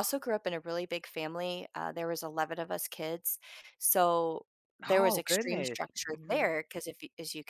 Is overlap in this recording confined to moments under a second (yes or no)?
no